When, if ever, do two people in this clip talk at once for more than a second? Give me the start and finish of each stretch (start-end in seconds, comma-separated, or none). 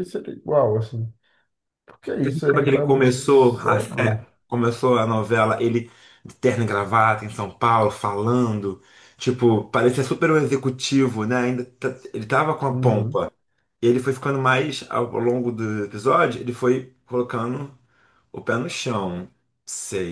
2.2-4.2